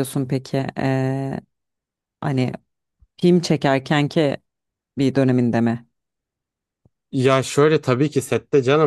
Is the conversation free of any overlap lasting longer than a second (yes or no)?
yes